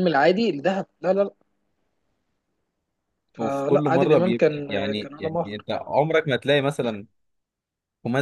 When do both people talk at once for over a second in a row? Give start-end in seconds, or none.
3.4-5.7